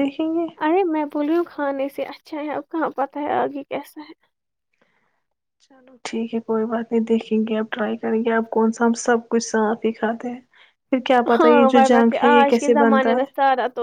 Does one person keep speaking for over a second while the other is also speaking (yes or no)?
yes